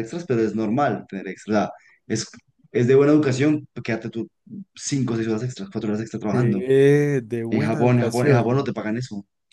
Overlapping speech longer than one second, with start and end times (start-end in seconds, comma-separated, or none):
7.5-8.8